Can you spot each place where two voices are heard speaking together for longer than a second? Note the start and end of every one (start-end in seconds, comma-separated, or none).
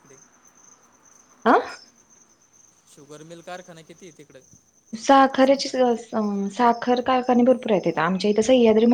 none